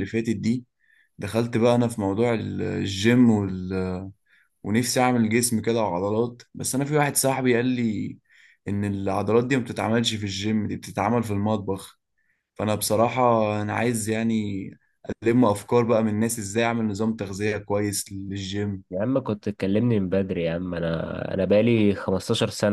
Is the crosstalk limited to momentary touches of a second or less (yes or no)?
yes